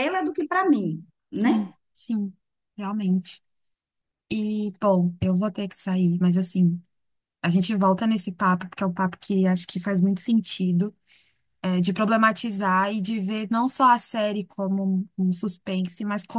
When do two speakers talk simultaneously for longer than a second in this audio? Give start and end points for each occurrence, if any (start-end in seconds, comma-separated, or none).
none